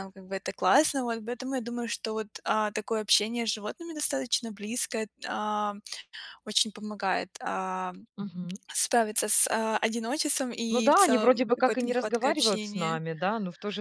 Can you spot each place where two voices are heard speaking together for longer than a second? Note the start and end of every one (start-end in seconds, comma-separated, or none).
10.7-13.0